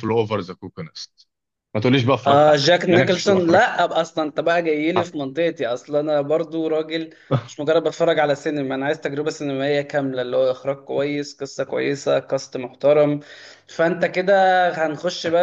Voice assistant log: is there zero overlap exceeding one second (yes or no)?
no